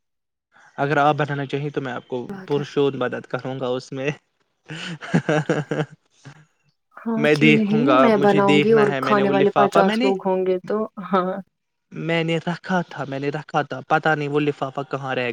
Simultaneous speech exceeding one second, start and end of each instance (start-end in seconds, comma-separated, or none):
7.2-10.1